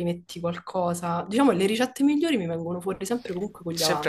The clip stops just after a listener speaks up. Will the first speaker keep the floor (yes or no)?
no